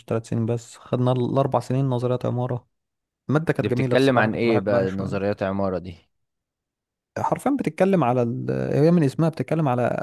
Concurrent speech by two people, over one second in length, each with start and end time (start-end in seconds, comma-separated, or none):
3.6-5.2